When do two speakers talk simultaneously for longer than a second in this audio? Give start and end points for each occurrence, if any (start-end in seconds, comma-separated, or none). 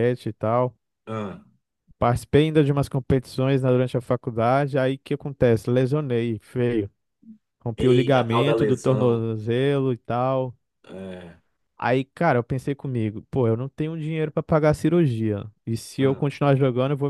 7.8-9.3